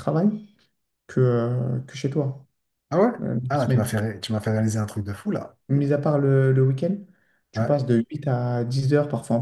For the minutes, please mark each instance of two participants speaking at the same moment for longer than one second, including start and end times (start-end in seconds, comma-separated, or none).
none